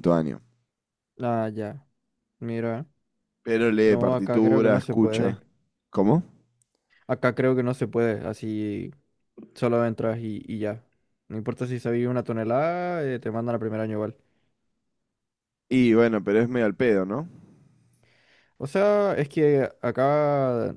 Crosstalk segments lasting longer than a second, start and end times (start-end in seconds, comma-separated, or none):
3.9-5.4